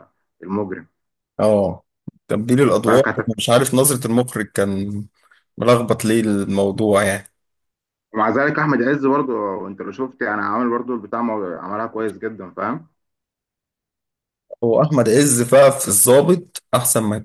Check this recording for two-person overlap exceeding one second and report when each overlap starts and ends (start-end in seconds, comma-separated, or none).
none